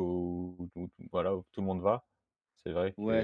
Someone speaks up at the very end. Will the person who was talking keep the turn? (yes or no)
no